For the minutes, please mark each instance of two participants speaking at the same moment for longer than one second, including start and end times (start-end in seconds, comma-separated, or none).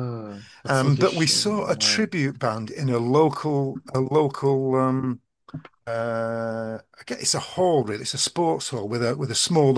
0.7-2.0